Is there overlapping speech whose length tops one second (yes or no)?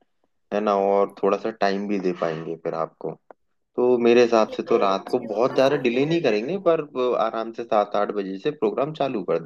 yes